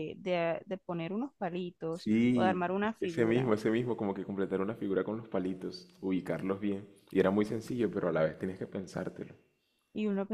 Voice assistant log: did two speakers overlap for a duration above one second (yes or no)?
yes